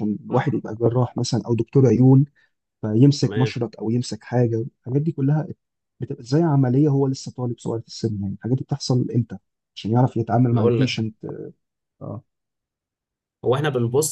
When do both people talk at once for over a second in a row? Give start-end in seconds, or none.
none